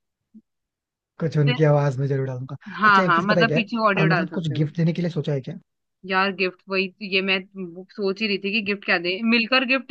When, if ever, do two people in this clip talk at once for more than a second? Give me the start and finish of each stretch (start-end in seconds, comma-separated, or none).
2.8-4.6